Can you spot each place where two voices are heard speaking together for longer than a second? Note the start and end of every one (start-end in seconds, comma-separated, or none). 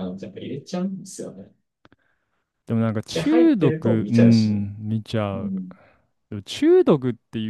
3.1-4.7